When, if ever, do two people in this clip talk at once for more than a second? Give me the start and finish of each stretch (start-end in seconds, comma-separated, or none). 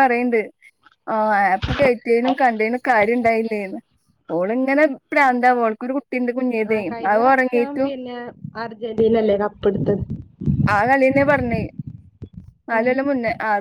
none